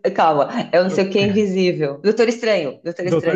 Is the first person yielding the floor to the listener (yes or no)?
yes